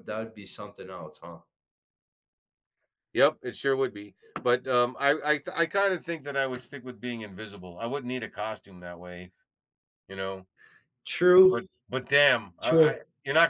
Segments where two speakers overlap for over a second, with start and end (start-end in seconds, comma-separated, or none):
none